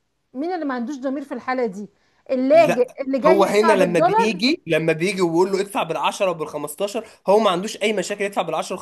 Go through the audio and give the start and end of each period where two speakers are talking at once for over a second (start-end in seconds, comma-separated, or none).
2.5-4.4